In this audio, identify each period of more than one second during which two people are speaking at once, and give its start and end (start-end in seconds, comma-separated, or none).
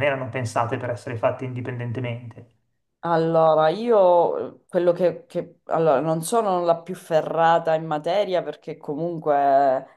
none